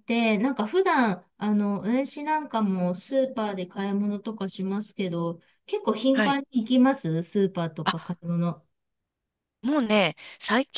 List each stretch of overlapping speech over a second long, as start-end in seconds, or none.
none